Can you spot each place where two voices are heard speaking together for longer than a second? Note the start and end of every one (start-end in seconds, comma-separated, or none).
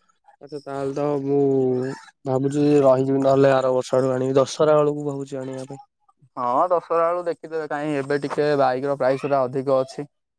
none